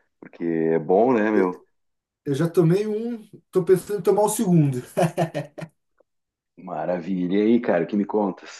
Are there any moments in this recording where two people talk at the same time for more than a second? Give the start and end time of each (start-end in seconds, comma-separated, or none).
none